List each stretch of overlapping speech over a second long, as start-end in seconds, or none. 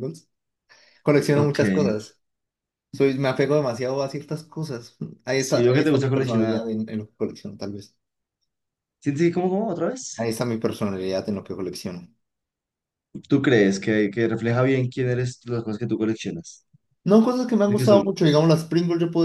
5.3-6.6